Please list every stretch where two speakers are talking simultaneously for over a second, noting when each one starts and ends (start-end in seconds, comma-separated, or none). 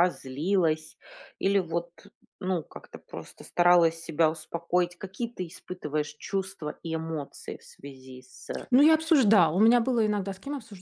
none